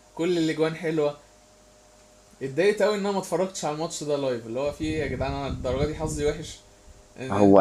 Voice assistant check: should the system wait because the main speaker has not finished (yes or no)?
no